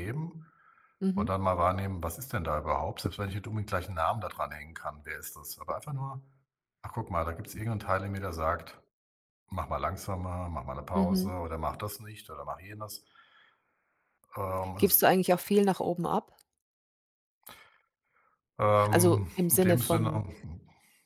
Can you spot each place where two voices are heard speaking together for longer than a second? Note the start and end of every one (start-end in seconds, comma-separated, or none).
18.9-20.2